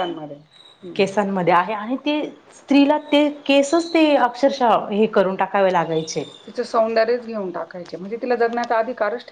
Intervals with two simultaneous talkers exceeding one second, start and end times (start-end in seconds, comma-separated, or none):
none